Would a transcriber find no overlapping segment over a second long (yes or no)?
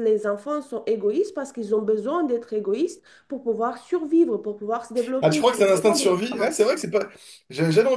no